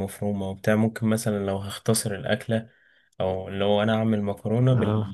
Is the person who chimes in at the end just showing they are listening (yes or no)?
yes